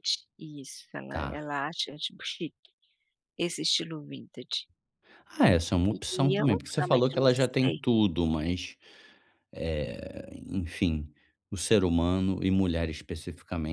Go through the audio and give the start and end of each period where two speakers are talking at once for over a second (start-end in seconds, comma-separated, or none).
6.1-7.8